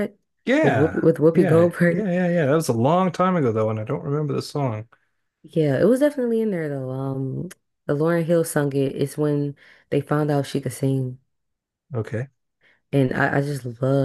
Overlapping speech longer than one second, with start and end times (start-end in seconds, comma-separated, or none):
0.6-2.1